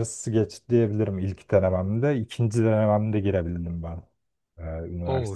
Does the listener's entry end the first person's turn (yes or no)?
yes